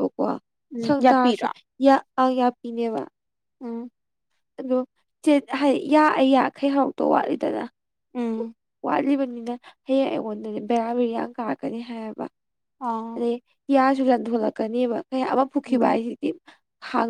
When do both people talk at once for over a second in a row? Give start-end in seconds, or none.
none